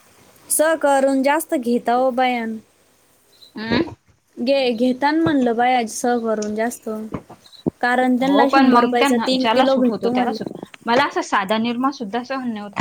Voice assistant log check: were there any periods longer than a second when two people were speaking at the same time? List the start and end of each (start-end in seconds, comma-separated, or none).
8.2-10.3